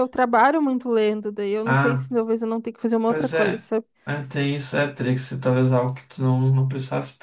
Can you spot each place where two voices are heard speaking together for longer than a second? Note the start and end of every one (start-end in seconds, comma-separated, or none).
none